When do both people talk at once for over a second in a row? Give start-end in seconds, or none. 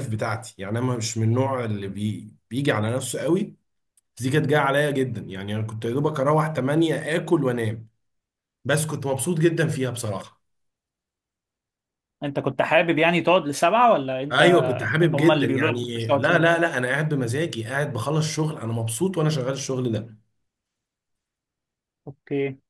15.1-16.7